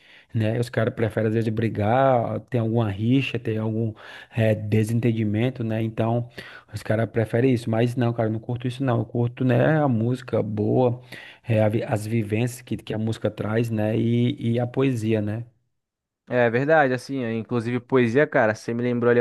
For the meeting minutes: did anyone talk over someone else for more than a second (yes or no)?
no